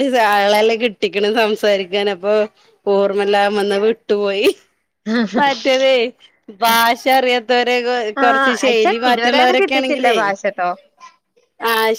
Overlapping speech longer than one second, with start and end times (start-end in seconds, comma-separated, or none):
8.2-10.2